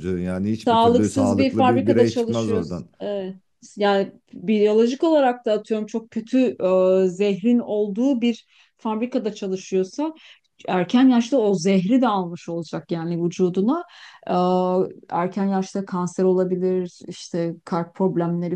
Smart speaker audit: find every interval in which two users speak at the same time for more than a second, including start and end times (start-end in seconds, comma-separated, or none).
0.7-2.9